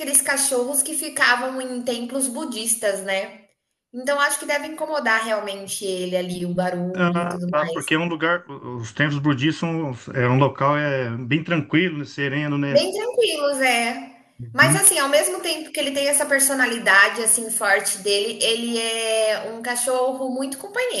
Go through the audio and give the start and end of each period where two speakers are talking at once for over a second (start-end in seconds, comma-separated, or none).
none